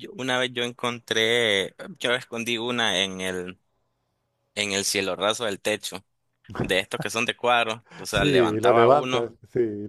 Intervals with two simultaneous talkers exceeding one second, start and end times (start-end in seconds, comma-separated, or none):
8.1-9.4